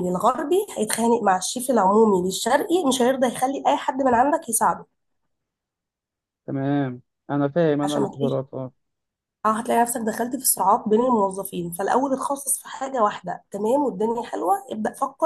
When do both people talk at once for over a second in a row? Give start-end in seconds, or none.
none